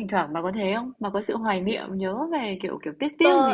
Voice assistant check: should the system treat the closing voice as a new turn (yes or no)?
yes